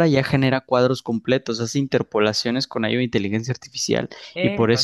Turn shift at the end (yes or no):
no